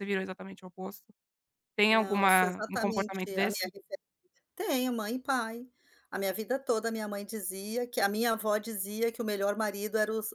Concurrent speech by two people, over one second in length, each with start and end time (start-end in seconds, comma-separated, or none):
1.9-3.7